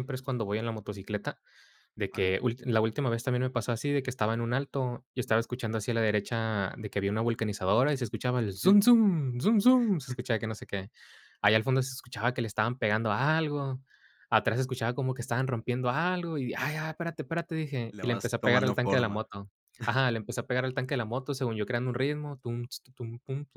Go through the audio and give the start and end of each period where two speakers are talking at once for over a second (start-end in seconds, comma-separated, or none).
17.9-19.2